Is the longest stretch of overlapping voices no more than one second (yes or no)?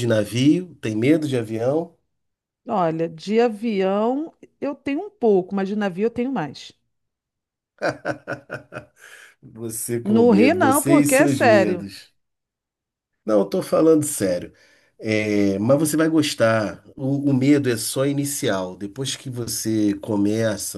no